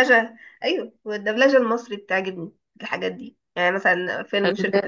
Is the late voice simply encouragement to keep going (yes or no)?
yes